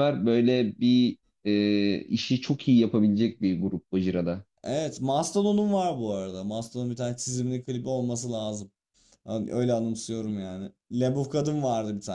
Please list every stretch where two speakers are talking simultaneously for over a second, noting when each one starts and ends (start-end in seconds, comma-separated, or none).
none